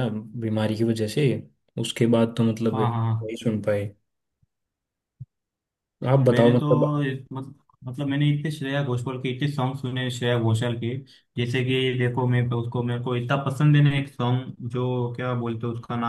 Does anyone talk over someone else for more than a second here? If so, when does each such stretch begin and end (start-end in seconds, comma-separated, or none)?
none